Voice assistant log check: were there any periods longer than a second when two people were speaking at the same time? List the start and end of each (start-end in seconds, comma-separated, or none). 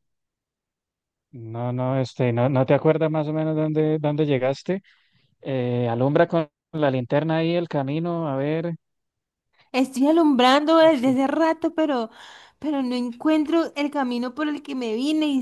none